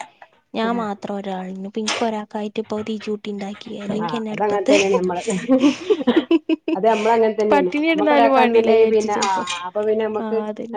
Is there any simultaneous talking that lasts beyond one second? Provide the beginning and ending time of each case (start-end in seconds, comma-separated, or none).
7.5-9.3